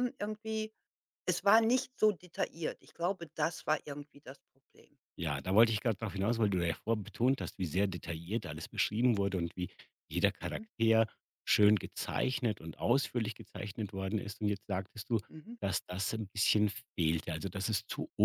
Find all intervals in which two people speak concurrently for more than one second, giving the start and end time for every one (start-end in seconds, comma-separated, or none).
none